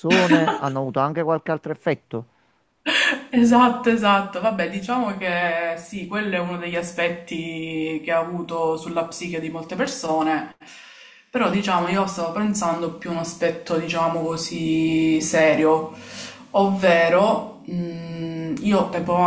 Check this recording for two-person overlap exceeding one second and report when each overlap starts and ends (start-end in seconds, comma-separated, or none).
none